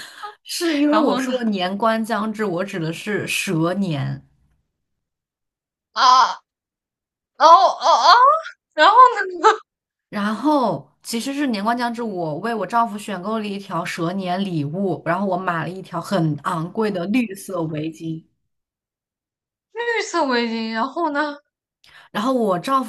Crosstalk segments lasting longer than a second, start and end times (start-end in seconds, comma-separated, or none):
none